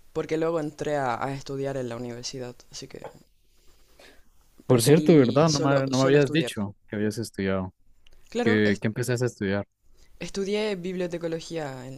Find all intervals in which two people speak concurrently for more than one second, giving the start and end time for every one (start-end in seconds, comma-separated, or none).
4.7-6.5